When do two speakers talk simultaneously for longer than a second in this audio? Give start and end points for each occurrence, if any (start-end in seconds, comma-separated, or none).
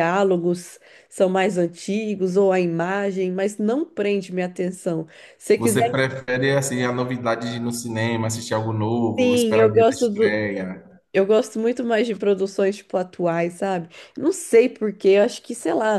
9.2-10.4